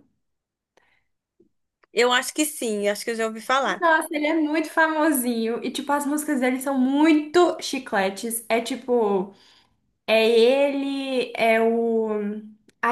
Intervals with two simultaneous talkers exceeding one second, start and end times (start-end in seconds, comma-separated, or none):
none